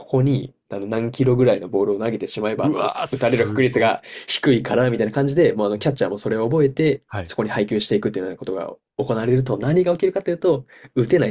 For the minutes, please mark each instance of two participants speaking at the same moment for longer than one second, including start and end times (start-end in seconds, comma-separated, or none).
2.6-4.1